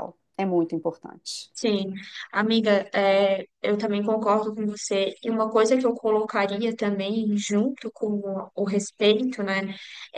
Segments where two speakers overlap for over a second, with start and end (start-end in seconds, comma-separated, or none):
none